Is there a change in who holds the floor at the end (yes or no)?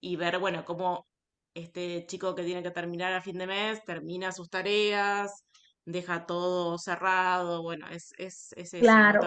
yes